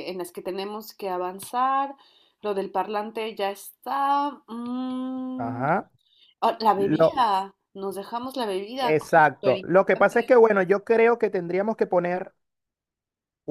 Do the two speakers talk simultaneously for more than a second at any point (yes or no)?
yes